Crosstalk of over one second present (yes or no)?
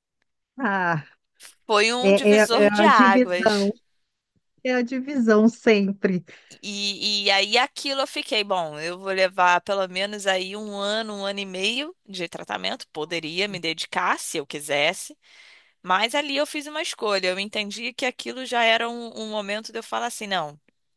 yes